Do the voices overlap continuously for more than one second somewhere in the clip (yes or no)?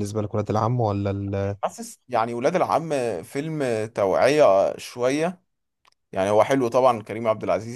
no